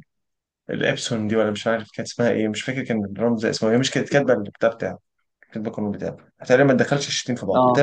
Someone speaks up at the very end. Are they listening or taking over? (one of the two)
listening